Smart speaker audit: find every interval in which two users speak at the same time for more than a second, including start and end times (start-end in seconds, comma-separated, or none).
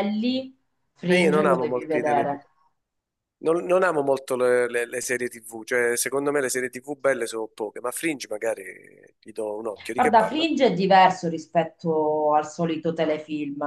1.1-2.4